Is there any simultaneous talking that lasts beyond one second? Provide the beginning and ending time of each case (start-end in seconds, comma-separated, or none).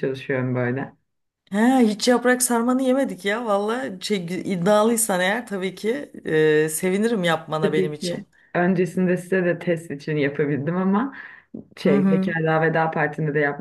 none